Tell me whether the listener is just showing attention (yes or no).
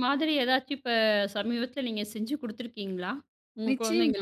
no